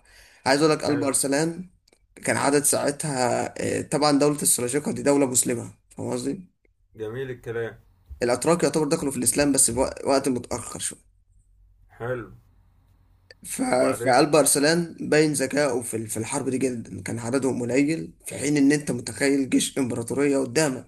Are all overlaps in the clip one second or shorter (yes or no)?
yes